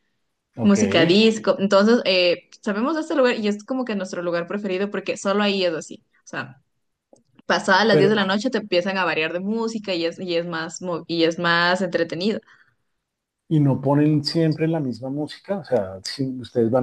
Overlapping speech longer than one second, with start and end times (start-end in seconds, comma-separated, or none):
none